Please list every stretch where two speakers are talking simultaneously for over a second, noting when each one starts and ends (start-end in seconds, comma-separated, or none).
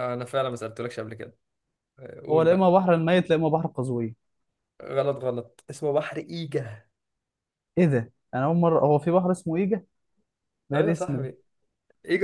none